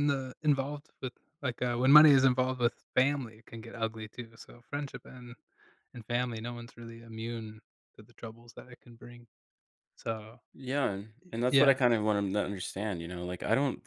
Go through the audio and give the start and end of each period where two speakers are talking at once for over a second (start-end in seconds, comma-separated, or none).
none